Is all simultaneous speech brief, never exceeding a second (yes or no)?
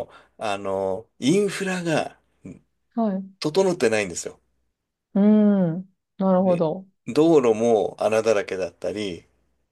yes